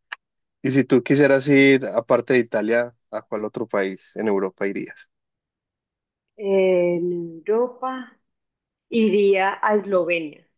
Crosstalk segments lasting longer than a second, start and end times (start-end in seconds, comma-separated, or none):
none